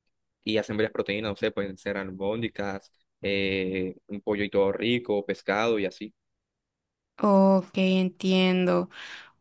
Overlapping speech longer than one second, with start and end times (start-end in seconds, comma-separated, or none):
none